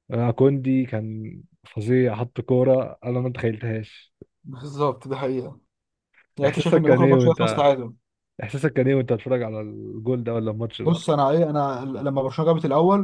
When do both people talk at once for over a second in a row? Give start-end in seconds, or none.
6.5-7.7